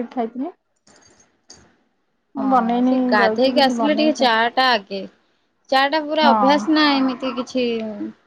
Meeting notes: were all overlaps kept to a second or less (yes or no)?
no